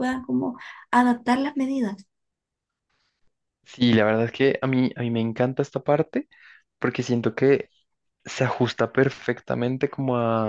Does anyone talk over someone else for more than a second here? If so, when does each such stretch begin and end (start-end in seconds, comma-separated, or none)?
none